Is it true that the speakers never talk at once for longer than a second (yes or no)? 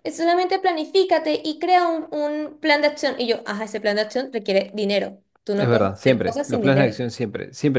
no